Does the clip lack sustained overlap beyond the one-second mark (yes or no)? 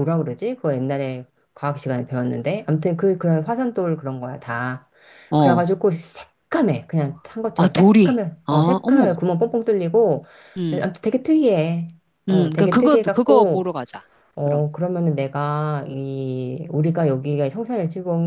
no